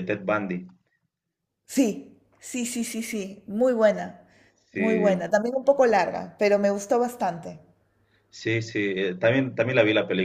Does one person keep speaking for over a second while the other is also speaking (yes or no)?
no